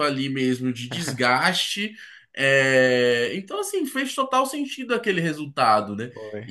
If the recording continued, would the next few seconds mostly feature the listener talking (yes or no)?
yes